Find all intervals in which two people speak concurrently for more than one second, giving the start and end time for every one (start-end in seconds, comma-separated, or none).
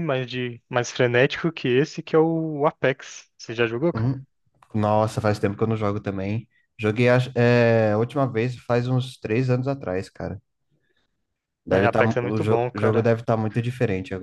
11.7-13.1